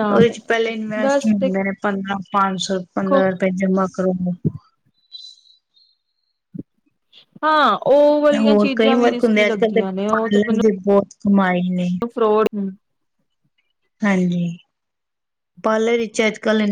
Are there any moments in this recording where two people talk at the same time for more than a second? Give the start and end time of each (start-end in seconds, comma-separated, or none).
8.4-10.7